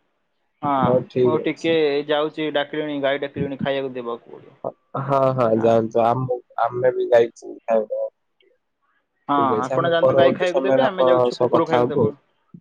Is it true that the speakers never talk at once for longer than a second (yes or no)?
no